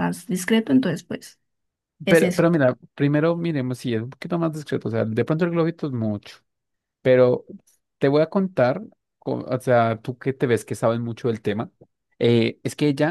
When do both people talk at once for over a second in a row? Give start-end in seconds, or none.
none